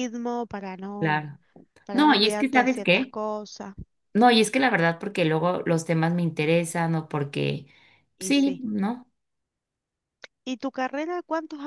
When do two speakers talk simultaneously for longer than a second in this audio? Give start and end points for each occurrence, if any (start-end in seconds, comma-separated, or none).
1.9-3.2